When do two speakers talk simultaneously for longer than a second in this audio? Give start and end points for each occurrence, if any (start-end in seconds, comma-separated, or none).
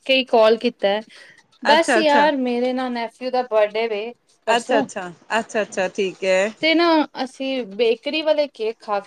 none